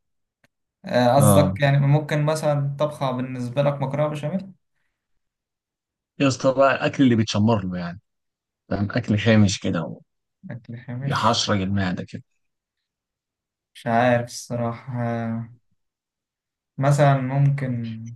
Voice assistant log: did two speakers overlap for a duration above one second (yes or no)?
no